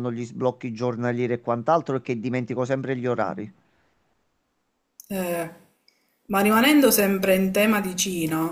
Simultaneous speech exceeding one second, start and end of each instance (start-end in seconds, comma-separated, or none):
none